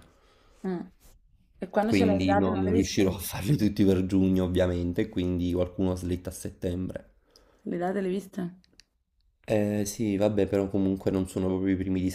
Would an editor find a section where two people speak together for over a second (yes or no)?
yes